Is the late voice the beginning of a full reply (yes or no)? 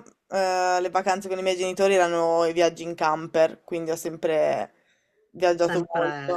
no